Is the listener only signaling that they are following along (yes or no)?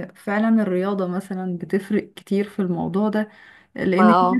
yes